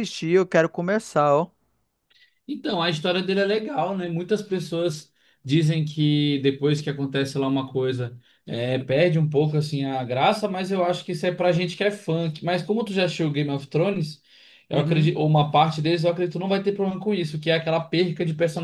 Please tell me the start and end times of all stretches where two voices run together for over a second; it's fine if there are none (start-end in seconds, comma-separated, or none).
none